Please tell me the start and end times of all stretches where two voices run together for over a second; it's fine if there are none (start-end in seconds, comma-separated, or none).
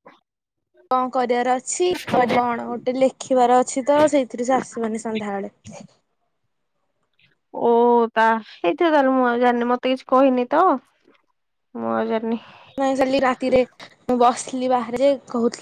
none